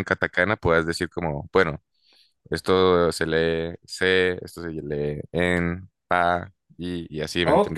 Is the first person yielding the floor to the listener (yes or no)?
yes